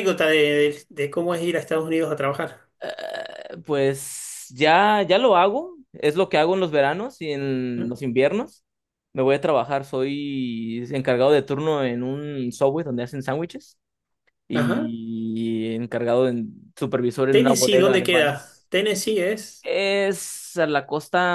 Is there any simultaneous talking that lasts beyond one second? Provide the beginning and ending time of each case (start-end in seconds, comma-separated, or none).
17.3-18.7